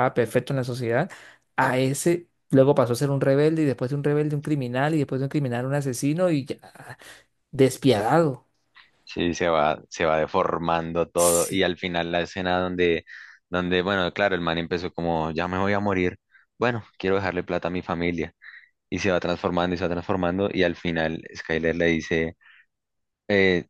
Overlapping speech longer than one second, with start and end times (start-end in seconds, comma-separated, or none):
none